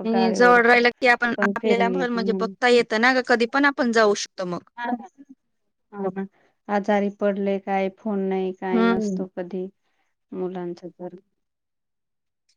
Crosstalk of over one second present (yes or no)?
yes